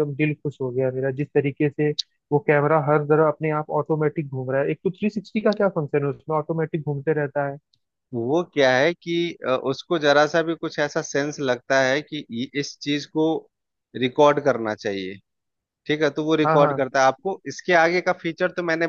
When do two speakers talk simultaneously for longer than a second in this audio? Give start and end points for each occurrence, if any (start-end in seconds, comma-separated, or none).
none